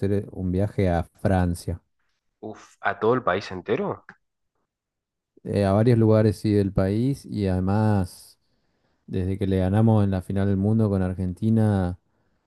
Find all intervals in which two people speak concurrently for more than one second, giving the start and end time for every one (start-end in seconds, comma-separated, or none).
none